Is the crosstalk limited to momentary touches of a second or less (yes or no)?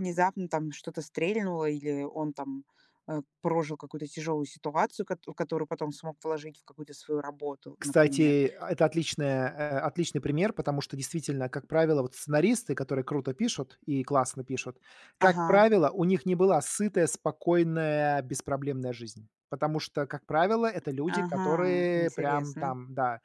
no